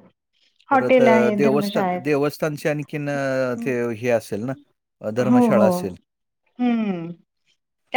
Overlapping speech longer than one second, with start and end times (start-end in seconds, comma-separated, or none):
0.7-2.0